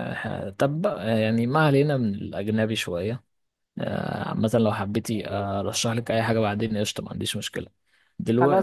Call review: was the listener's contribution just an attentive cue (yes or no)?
yes